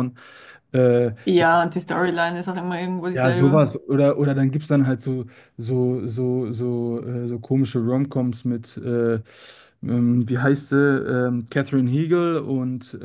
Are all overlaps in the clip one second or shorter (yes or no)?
yes